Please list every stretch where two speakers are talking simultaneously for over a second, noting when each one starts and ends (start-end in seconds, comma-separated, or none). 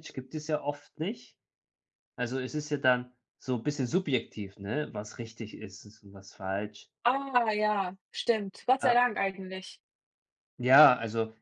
none